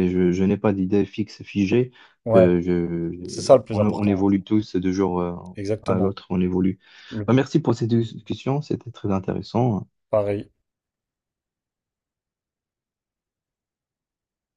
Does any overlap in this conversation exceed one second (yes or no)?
no